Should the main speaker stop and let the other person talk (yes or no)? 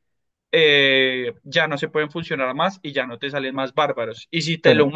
no